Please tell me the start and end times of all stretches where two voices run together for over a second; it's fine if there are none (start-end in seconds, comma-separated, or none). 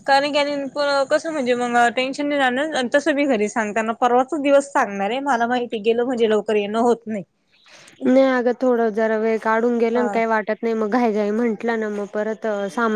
none